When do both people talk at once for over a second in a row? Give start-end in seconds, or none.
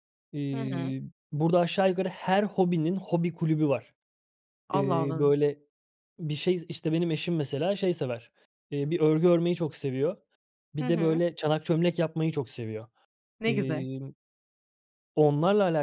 none